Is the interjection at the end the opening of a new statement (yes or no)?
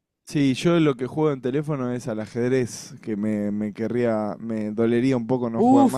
yes